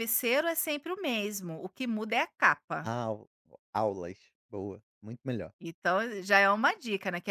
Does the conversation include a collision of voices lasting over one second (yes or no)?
no